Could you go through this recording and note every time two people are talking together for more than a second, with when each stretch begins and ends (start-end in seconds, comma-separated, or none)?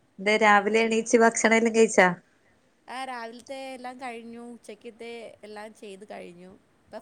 none